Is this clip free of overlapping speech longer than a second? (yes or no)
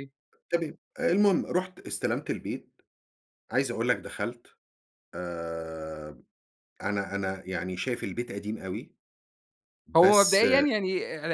yes